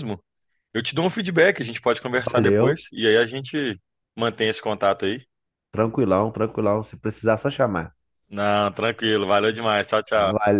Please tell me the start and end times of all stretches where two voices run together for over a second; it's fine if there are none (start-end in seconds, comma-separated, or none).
none